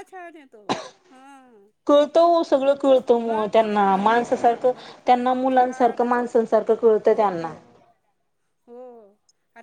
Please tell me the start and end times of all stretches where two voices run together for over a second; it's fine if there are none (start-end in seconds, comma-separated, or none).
3.8-6.5